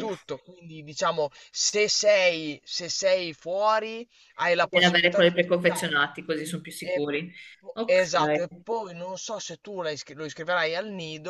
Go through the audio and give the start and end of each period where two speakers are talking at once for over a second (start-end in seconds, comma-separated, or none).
4.6-6.1